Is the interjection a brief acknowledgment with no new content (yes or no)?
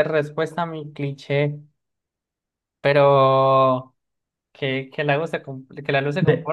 yes